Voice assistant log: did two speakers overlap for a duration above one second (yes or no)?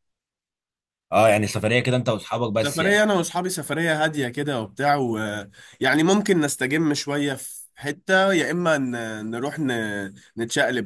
no